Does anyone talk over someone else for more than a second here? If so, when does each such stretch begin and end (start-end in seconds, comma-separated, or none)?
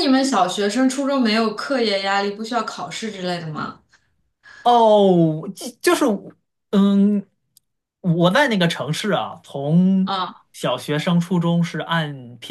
none